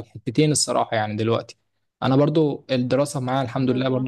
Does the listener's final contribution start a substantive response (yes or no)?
no